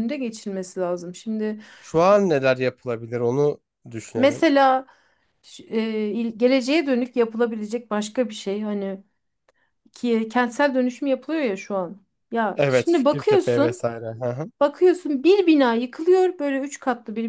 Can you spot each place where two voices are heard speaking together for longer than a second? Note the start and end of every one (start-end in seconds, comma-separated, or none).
12.5-13.8